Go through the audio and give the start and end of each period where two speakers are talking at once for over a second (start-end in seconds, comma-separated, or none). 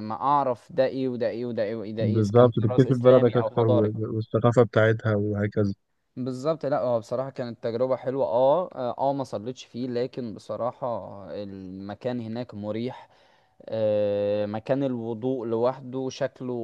2.0-3.9